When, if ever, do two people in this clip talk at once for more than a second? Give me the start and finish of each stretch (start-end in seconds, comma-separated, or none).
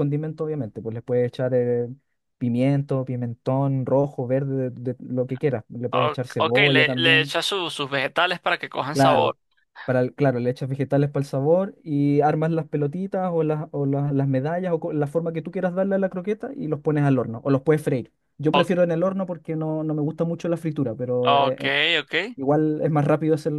5.9-7.3